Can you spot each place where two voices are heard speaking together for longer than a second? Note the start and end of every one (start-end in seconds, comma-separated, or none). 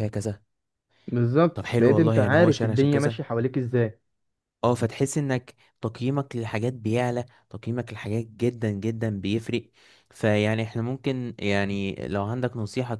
1.5-3.2